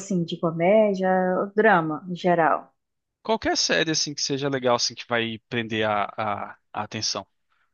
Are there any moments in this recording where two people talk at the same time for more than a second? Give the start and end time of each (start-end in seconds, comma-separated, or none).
none